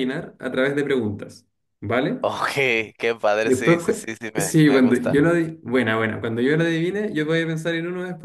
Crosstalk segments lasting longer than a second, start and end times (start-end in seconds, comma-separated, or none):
3.4-5.2